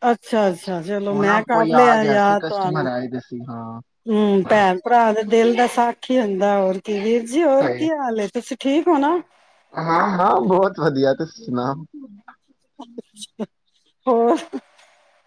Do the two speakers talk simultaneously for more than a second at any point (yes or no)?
yes